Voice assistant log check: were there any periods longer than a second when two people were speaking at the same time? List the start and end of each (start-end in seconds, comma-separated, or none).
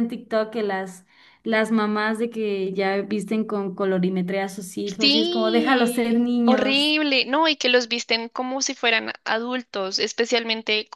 5.0-6.9